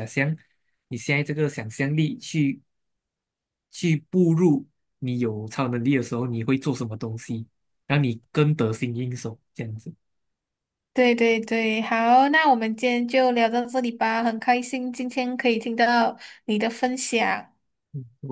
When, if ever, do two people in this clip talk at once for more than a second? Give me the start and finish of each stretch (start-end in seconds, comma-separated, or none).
none